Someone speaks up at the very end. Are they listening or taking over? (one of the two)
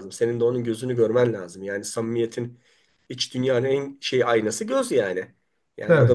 listening